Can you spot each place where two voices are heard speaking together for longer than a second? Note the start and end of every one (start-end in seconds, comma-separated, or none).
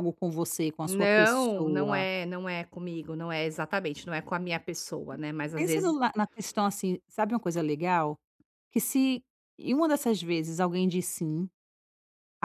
0.8-2.0